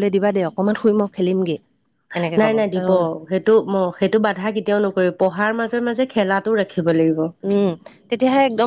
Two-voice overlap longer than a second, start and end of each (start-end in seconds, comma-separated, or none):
none